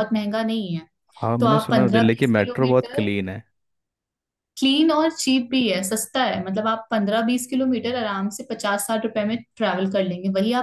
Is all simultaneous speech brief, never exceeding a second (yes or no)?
no